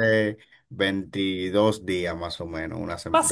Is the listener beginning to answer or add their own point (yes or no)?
yes